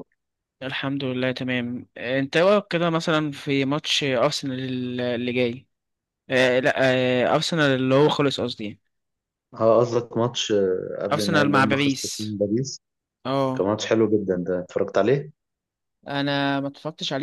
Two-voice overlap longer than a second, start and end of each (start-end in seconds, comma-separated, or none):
11.1-12.4